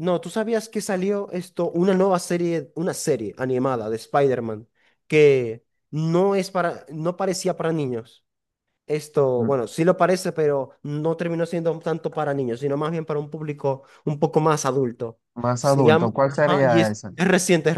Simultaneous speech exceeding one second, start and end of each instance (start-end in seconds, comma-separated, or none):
15.6-17.1